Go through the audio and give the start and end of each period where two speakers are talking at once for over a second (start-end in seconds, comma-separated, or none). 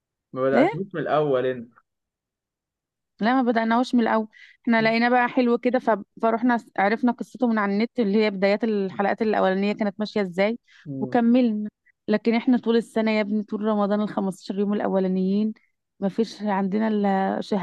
none